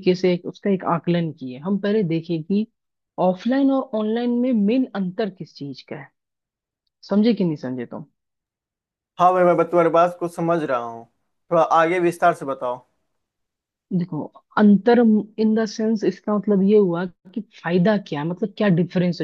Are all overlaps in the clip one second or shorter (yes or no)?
yes